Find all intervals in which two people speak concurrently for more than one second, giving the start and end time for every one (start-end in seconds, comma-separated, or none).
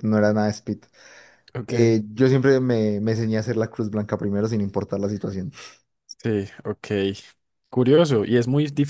none